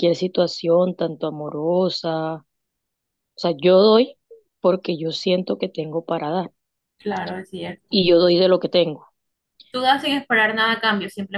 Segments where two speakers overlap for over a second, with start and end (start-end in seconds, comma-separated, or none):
none